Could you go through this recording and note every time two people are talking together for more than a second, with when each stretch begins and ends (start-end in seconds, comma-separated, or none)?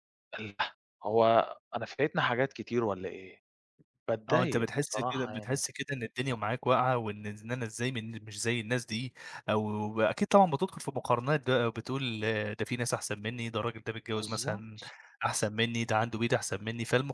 4.3-5.6